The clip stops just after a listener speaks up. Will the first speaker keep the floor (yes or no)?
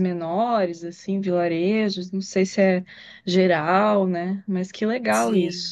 no